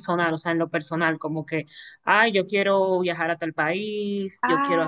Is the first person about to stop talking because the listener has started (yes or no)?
yes